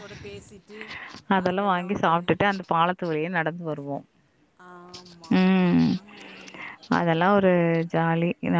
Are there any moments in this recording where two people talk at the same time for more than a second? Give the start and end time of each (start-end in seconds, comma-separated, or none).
none